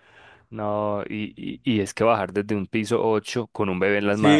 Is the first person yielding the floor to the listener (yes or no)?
yes